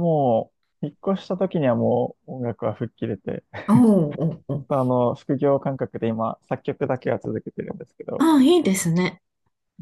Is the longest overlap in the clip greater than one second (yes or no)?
no